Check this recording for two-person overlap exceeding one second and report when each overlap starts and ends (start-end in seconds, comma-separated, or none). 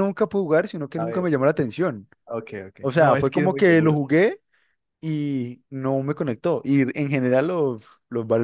2.8-4.0